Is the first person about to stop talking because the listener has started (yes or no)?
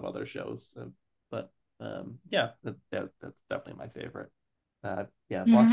yes